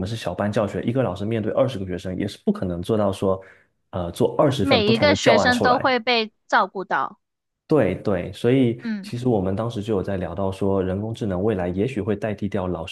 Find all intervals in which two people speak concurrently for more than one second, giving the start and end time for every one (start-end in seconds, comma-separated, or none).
4.6-5.9